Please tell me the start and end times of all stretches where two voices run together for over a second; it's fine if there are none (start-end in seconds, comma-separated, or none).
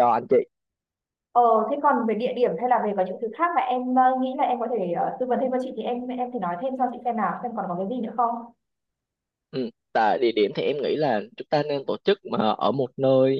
none